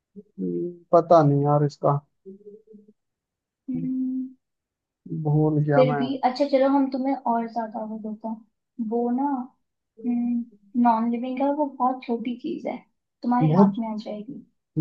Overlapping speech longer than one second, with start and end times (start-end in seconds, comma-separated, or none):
none